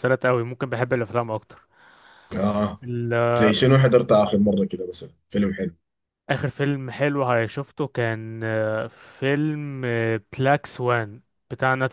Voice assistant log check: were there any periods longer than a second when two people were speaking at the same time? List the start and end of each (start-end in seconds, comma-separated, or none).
none